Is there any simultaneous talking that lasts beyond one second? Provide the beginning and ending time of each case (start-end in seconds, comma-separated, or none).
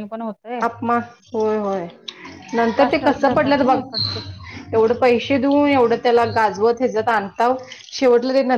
2.7-4.2